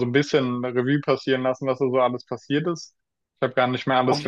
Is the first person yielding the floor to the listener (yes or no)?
no